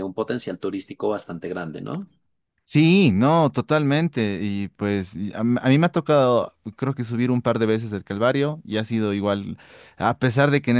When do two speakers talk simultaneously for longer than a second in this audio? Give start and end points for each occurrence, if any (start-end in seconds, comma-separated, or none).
none